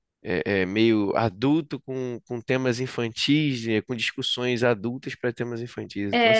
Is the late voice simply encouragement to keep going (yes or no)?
no